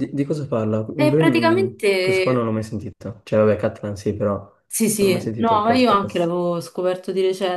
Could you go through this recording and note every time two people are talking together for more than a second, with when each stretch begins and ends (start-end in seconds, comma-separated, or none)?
1.0-2.5, 5.0-6.3